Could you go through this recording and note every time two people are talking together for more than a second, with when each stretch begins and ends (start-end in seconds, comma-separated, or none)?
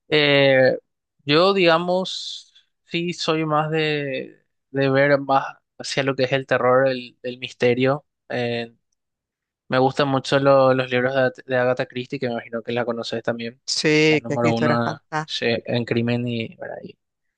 14.1-15.7